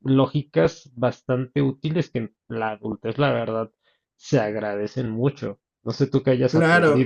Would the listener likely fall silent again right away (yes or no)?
no